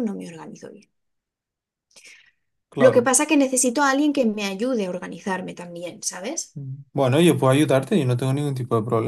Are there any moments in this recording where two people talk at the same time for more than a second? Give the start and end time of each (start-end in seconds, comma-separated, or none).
none